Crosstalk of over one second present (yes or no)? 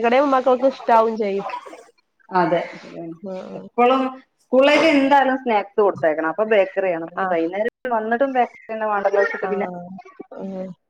no